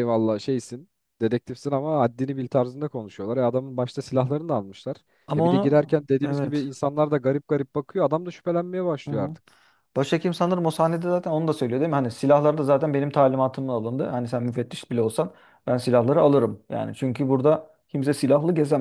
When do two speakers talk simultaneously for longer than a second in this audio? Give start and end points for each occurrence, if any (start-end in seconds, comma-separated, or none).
5.4-6.7